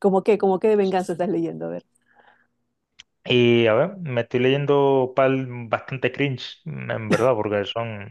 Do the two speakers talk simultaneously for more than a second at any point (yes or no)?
no